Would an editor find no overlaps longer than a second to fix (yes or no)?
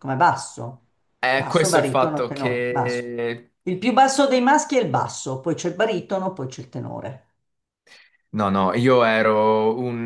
no